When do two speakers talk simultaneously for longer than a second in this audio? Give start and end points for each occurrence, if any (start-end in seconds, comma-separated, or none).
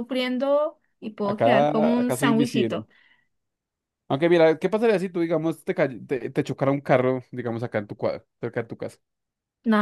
1.2-2.9